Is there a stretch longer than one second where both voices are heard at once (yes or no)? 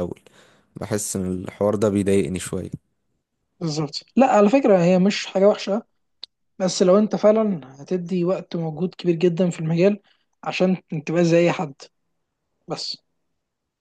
no